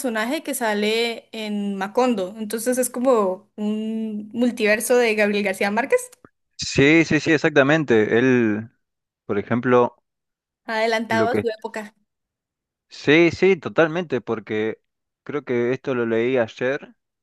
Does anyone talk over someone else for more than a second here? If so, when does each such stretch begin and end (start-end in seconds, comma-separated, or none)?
none